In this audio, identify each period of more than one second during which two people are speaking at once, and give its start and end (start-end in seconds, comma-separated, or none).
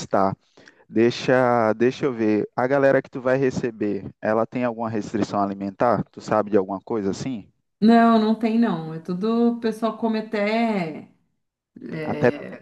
none